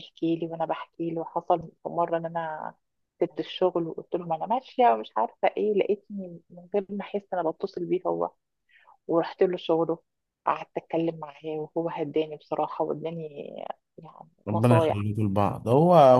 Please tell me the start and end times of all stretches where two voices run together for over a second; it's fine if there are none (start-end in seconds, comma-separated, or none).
none